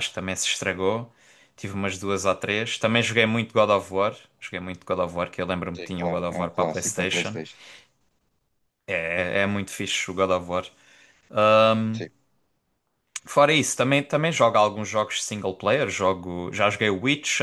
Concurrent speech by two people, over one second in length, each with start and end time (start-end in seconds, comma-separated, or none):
5.8-7.4